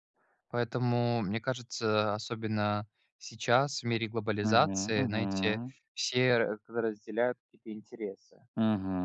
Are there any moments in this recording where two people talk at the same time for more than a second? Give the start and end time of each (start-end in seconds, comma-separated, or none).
4.4-5.7